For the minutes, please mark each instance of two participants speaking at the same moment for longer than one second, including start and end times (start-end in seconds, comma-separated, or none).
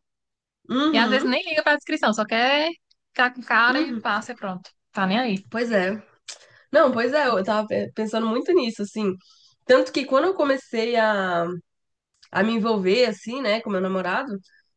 none